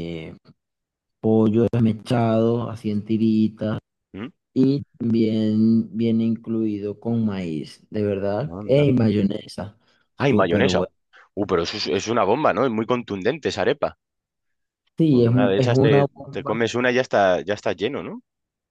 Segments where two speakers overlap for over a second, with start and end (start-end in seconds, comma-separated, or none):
15.1-16.7